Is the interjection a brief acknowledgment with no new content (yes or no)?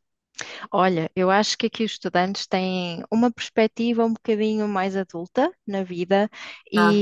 yes